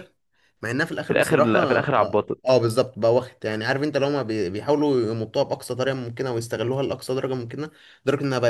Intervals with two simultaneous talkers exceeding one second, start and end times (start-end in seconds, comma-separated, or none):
1.1-2.6